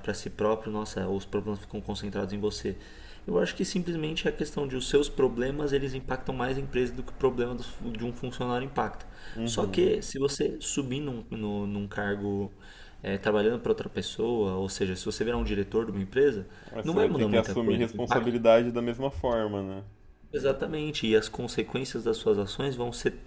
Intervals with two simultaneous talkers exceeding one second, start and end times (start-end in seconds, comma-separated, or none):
16.8-18.4